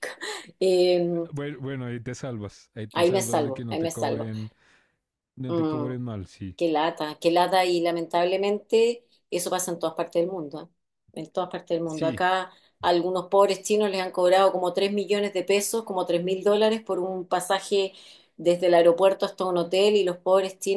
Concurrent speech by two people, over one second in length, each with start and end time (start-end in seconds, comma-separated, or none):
2.9-4.3